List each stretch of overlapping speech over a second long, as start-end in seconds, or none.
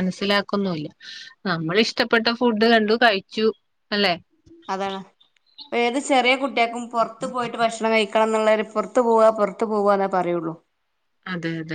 none